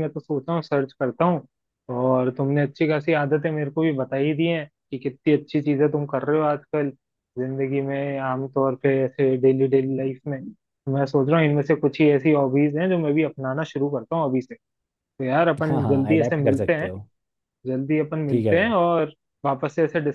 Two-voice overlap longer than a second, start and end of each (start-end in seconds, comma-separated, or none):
15.7-16.9